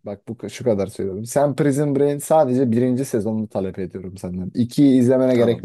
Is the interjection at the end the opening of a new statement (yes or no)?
no